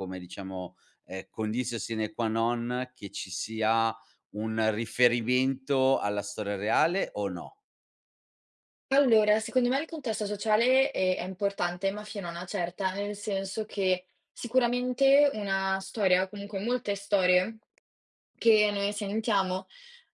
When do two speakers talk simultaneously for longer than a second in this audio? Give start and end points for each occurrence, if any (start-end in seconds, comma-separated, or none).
none